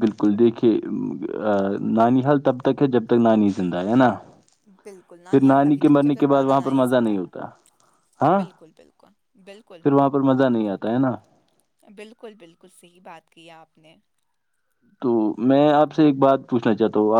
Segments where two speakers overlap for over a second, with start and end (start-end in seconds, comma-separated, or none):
5.3-7.1